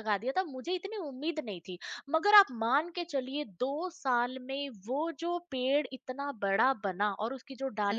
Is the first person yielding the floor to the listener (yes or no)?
no